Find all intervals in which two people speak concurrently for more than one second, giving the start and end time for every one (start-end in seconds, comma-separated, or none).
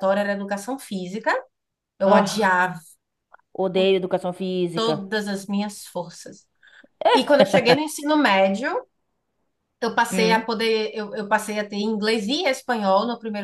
none